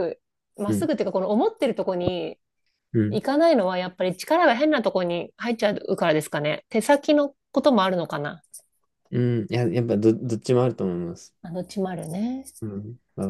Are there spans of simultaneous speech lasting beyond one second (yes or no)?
no